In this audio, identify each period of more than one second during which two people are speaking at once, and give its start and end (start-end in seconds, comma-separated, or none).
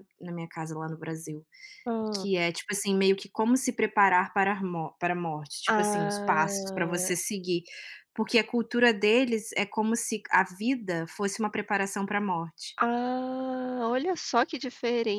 5.7-7.1